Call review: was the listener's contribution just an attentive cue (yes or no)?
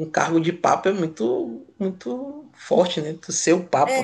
no